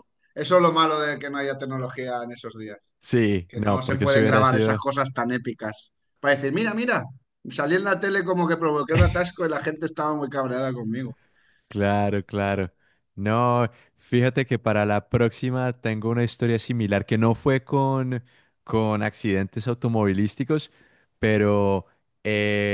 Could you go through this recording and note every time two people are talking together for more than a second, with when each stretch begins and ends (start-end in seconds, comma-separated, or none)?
3.5-4.8